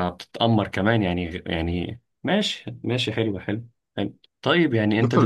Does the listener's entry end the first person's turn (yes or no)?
yes